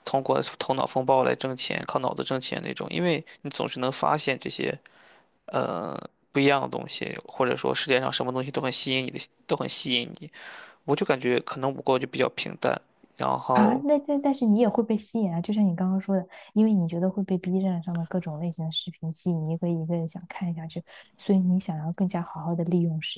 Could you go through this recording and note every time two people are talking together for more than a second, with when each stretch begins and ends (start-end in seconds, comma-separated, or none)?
none